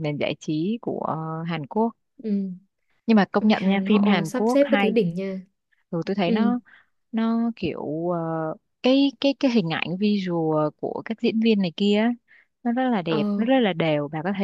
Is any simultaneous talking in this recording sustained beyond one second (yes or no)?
yes